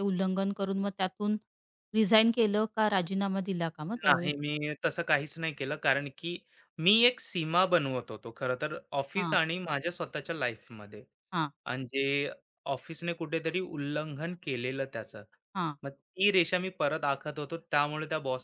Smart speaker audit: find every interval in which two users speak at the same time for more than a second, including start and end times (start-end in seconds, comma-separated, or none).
none